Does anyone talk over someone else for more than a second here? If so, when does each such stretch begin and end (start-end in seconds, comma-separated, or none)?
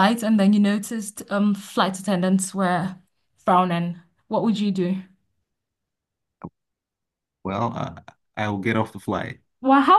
none